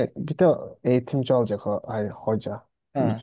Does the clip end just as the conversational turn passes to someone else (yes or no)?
yes